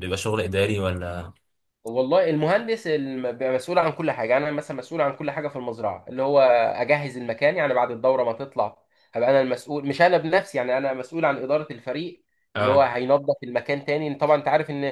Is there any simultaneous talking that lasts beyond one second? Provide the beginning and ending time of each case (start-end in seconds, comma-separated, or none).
none